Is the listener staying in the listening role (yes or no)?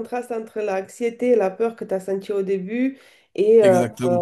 yes